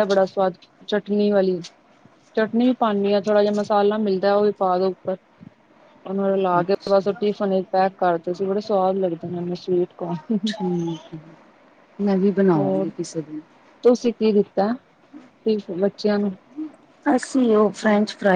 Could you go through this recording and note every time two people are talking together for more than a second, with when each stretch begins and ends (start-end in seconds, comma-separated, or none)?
none